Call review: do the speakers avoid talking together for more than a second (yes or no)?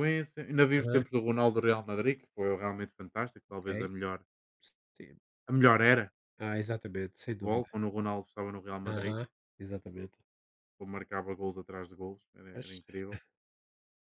yes